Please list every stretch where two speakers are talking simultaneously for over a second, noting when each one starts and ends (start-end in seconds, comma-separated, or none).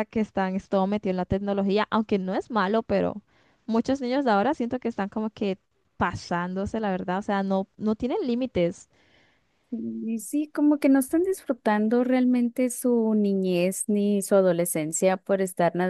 none